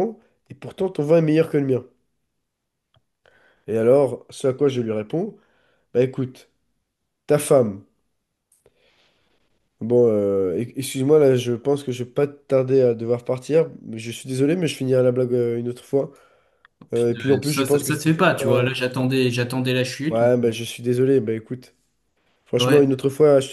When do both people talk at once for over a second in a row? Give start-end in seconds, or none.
17.3-18.7